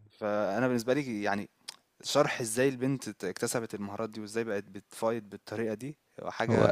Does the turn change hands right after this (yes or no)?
no